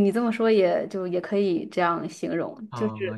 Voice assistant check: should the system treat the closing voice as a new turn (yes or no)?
yes